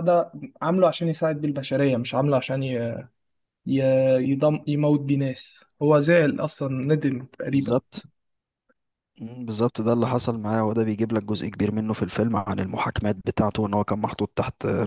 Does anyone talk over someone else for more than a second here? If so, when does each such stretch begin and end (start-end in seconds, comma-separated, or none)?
none